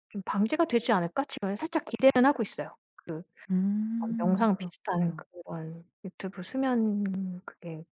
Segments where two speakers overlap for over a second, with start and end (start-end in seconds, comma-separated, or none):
4.0-5.2